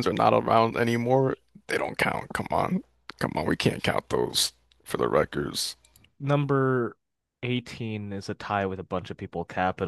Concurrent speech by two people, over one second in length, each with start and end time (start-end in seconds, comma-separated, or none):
none